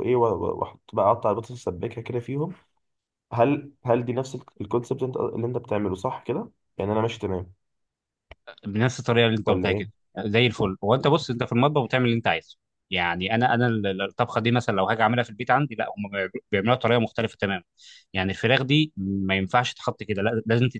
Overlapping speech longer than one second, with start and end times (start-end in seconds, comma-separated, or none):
none